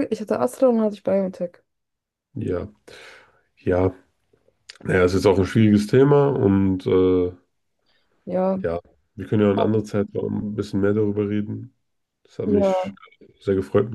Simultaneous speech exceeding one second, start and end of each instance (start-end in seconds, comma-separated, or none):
none